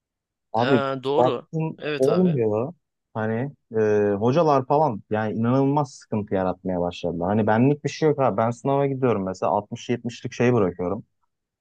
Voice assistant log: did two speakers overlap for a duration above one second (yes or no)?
yes